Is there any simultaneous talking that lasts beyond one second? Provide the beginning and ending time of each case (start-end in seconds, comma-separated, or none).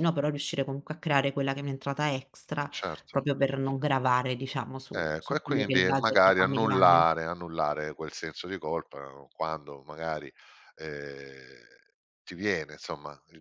4.9-7.0